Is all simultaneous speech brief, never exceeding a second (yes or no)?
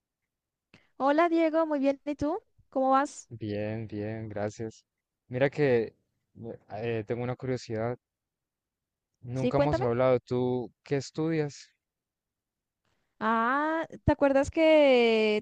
yes